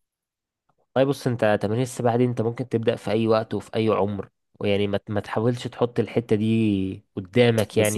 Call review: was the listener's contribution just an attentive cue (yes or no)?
no